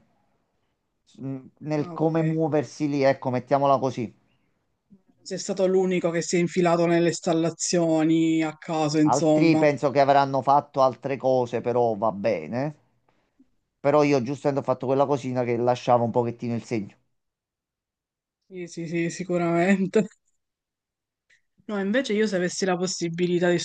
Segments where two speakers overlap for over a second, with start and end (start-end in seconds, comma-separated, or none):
none